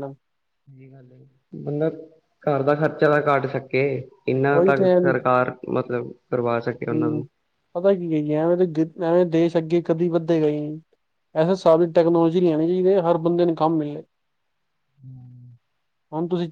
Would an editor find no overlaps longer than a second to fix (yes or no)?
yes